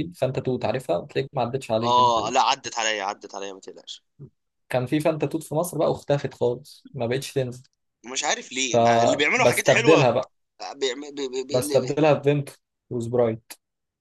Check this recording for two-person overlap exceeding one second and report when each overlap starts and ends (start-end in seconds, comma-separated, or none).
8.7-10.1